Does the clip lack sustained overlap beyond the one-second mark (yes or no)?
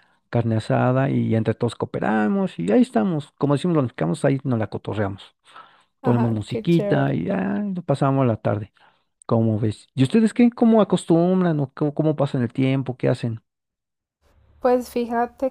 no